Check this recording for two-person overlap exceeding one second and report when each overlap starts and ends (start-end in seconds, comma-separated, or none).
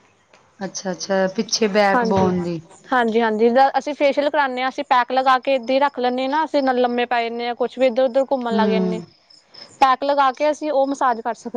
none